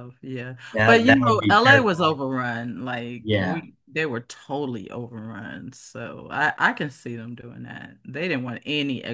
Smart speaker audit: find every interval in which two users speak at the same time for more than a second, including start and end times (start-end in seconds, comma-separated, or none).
0.7-2.2